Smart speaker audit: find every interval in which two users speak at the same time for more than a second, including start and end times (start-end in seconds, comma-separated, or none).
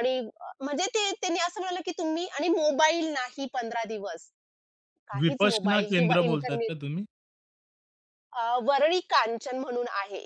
5.2-6.7